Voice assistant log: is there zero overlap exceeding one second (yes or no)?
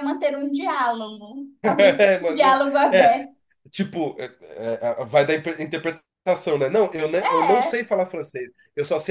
no